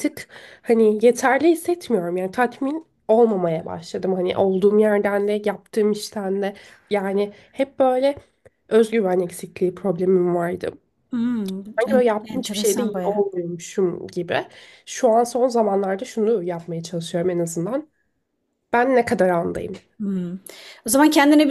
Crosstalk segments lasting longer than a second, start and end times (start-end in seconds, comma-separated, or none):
11.8-13.2